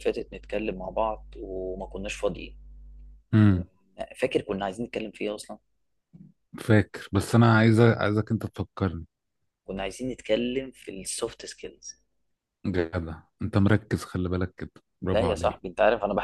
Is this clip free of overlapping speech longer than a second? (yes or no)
yes